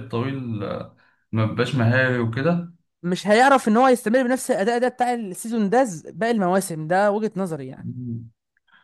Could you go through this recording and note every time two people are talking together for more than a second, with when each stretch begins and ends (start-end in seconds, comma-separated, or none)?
none